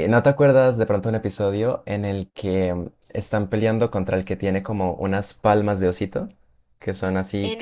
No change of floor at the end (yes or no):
no